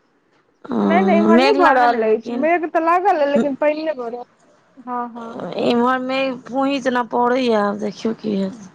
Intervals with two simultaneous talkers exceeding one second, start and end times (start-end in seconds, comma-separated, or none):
0.8-2.5